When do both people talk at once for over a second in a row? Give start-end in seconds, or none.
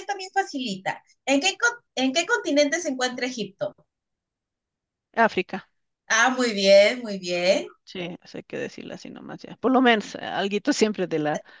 none